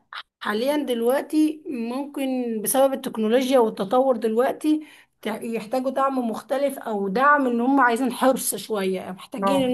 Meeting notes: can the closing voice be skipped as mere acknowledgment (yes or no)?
yes